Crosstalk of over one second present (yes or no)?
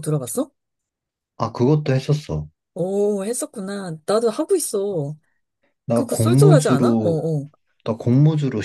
yes